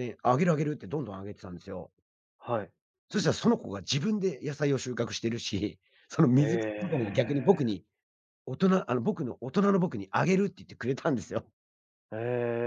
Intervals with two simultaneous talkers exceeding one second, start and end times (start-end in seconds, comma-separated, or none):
6.4-7.7